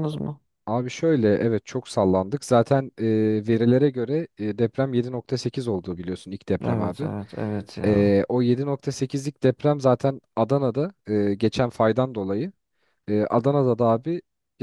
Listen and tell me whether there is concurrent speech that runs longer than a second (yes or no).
no